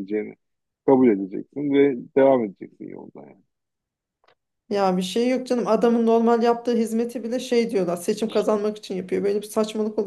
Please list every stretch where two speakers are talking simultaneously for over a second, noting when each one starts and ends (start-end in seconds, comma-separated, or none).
none